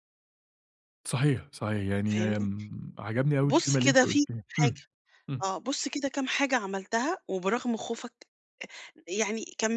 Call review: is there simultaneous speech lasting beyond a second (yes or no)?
yes